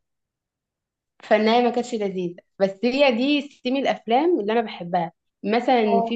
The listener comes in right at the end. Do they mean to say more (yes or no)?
no